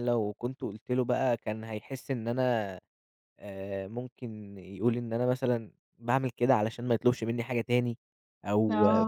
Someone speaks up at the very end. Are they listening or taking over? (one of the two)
listening